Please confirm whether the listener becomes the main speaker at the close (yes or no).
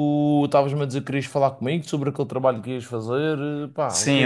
yes